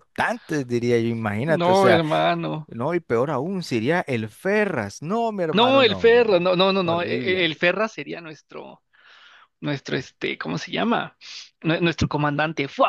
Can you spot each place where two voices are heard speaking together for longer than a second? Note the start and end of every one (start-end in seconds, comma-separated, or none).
5.5-7.5